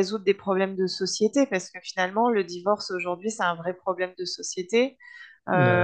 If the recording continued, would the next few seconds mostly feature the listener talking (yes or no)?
no